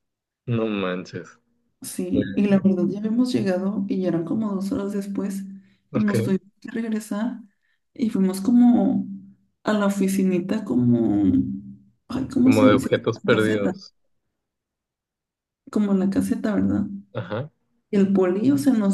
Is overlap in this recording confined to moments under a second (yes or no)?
no